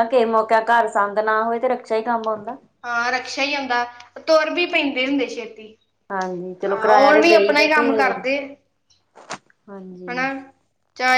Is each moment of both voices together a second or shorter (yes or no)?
no